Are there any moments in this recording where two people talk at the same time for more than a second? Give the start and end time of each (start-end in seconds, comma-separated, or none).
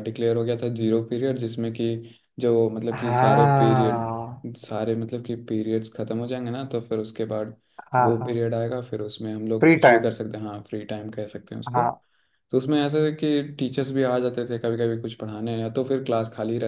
2.9-4.4